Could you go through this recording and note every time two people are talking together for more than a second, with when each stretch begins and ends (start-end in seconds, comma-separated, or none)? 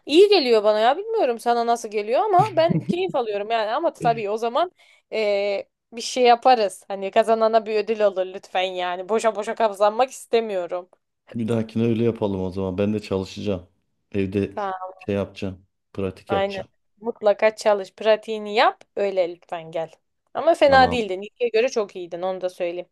none